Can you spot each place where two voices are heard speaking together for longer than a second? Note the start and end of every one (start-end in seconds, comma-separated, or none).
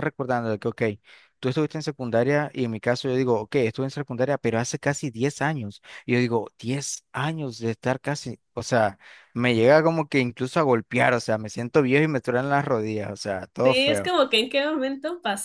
none